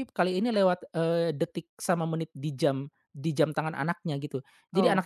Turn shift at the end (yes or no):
no